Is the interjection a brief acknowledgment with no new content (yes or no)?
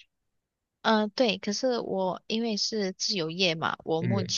yes